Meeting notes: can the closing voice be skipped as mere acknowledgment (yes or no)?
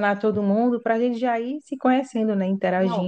no